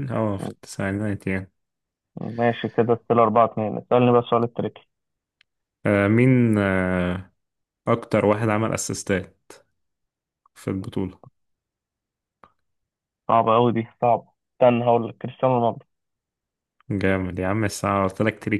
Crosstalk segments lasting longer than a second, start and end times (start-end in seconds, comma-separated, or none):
none